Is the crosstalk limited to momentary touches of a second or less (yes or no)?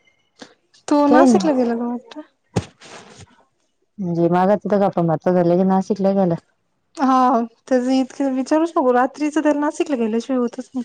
yes